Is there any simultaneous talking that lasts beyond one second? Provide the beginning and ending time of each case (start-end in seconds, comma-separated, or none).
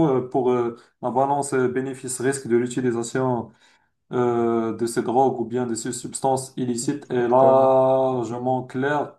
7.0-8.6